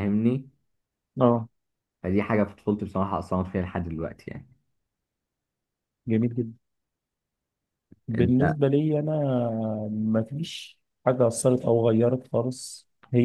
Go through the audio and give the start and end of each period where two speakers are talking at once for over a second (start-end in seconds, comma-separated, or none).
none